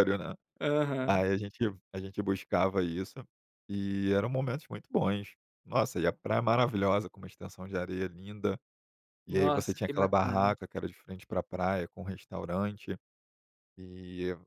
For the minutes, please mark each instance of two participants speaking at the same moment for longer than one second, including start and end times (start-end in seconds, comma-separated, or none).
9.3-10.5